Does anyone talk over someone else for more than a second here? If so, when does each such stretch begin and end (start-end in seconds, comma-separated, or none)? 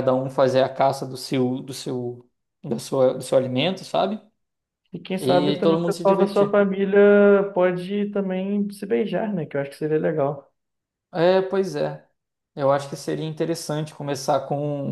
5.2-6.6